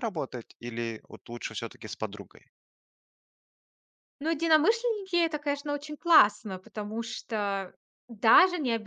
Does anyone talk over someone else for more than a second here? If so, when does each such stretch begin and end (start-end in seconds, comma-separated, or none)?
none